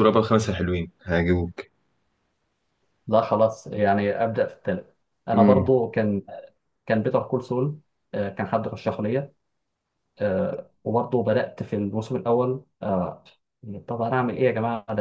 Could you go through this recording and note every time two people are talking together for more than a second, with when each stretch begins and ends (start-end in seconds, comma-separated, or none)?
none